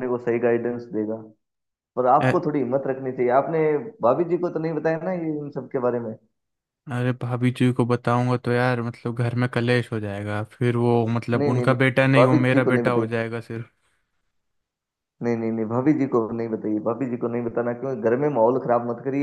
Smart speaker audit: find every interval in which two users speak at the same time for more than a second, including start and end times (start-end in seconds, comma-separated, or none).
11.4-13.1